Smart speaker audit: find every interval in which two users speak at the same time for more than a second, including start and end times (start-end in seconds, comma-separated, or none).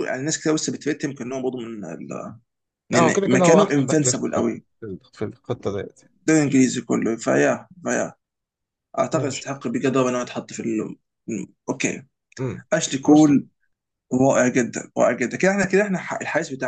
2.9-4.7